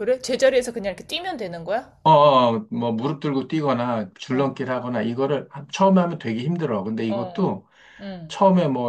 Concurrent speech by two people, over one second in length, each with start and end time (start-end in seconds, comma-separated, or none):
none